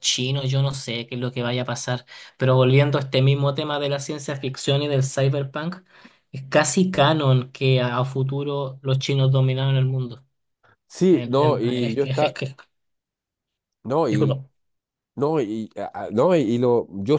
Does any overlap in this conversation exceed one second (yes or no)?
yes